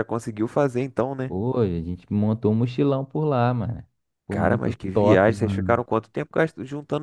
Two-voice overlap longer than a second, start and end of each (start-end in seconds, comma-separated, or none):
4.3-5.8